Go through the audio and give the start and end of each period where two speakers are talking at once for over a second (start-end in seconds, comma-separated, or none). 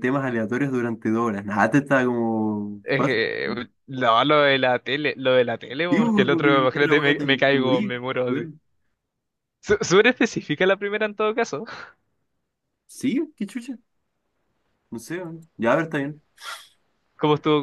5.9-8.5